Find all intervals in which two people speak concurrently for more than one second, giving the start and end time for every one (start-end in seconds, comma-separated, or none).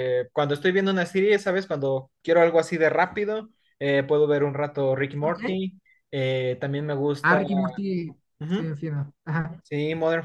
none